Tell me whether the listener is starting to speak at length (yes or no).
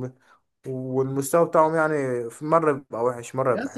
yes